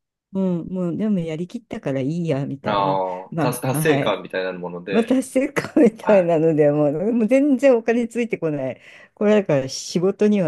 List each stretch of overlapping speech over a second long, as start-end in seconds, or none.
2.6-4.2